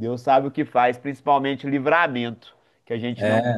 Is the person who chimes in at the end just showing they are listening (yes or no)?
yes